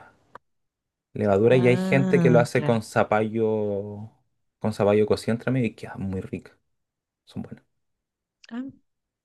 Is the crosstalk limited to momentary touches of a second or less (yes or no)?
no